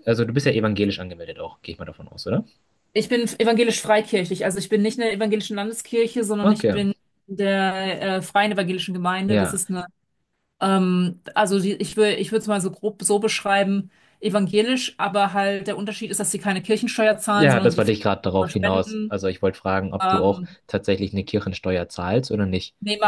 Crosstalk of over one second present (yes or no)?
yes